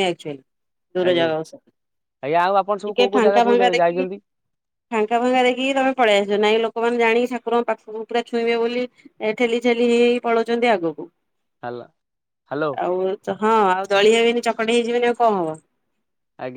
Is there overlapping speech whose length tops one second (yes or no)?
yes